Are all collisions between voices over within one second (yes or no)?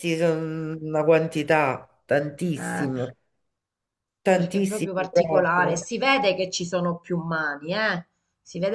no